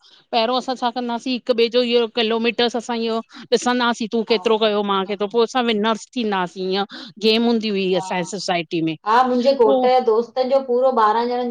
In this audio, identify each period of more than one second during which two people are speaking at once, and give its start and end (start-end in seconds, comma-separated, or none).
none